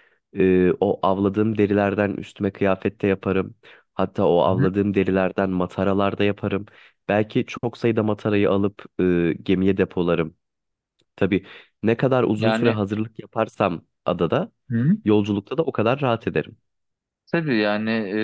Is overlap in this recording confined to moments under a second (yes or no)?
yes